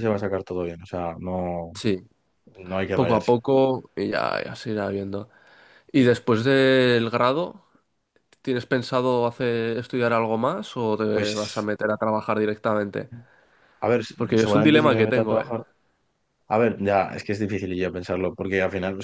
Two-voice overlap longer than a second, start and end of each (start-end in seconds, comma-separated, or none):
14.2-15.4